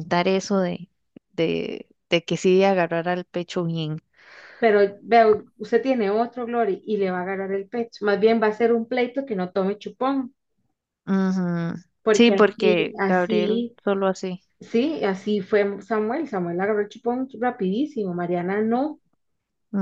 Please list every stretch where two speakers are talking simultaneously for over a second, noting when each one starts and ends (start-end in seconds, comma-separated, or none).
12.1-13.8